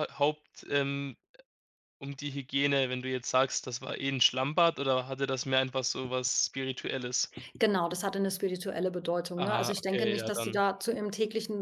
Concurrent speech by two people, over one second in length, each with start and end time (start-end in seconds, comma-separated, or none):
9.4-10.6